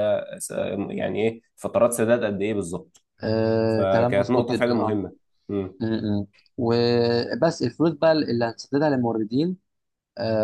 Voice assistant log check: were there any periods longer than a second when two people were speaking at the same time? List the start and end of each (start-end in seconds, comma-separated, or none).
3.7-5.0